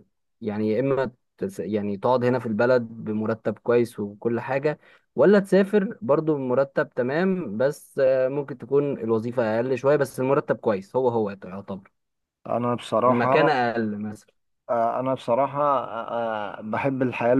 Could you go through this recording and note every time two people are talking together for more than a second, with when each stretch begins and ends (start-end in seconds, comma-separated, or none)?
none